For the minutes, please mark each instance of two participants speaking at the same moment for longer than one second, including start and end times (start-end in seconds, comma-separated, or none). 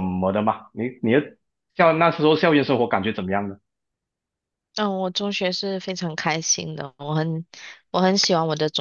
none